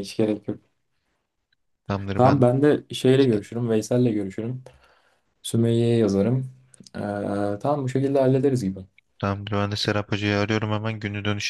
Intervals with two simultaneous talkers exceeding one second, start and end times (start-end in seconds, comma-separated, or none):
none